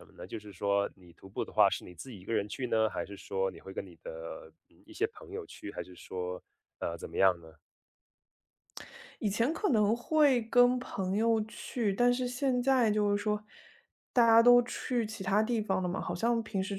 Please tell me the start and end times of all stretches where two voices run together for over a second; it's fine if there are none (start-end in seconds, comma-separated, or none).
none